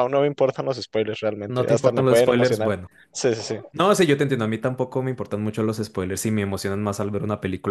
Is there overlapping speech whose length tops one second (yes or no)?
yes